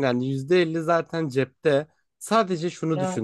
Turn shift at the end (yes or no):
no